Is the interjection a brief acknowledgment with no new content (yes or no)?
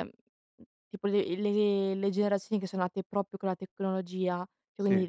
yes